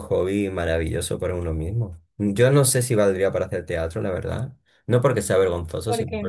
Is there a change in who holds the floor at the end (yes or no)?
no